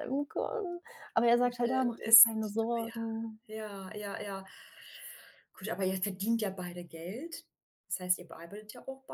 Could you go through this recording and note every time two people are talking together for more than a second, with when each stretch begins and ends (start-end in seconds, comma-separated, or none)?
1.4-3.4